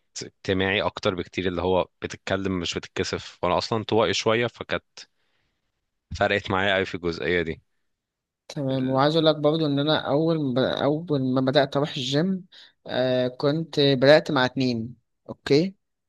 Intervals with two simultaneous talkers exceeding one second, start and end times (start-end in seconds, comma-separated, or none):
none